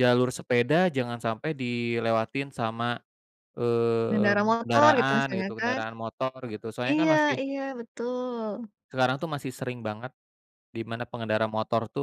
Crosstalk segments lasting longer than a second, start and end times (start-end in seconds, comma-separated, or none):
4.1-5.8